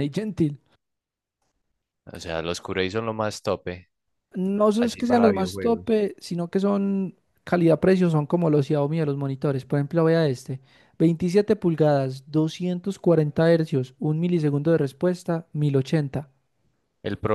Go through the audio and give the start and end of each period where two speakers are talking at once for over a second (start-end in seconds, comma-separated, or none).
4.8-6.0